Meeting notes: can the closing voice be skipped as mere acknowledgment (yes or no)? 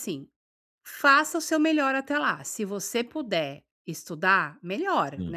yes